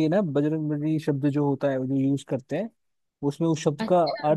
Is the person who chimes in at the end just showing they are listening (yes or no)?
yes